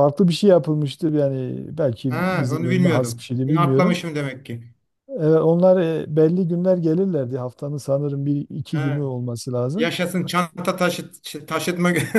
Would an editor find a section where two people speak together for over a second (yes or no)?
yes